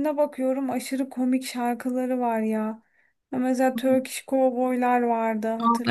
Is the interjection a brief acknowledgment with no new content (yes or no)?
no